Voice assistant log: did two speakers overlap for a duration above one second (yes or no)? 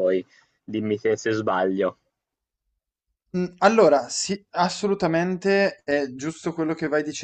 no